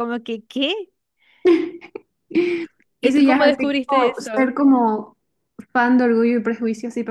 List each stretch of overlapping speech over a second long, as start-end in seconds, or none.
3.0-4.5